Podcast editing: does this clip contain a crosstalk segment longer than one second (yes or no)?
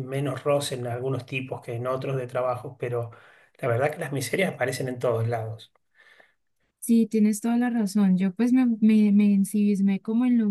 no